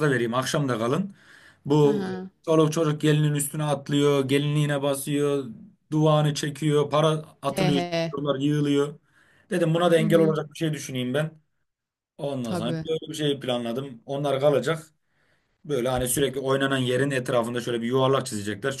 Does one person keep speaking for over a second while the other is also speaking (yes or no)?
no